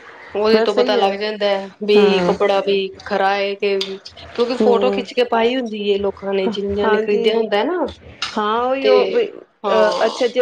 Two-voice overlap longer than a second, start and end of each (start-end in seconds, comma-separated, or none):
none